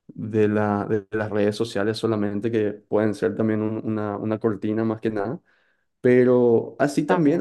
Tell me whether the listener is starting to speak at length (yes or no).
no